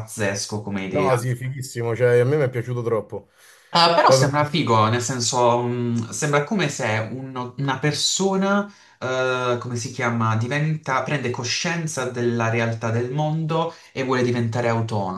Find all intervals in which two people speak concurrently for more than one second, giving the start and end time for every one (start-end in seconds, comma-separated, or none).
none